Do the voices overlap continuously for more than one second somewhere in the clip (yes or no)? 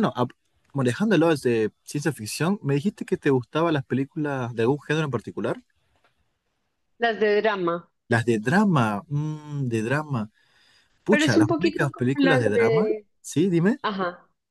yes